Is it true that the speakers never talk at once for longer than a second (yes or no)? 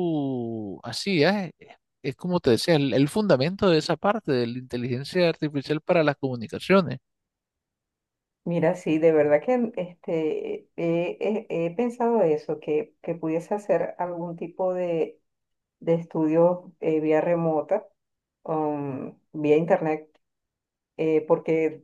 yes